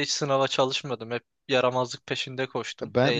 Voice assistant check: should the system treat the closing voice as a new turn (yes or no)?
yes